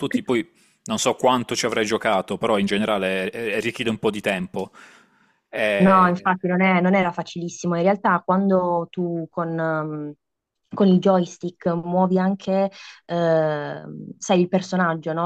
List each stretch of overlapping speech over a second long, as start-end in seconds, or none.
none